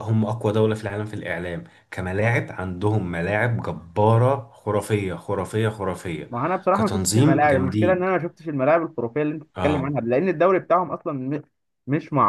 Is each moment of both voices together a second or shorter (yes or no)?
no